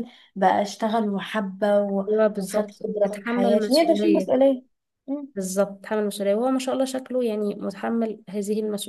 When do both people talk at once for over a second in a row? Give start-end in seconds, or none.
2.1-4.3